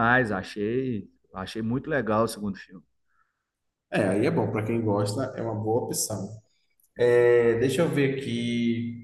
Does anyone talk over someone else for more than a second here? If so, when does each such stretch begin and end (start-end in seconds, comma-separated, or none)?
none